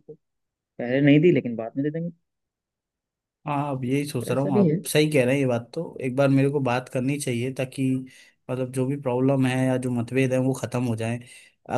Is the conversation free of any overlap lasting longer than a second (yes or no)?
yes